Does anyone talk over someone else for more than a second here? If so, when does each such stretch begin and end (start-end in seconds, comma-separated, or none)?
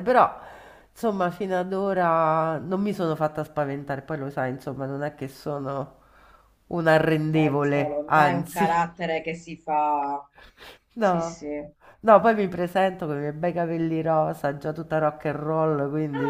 7.4-8.9